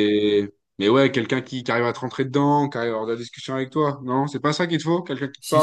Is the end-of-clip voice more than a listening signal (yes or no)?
yes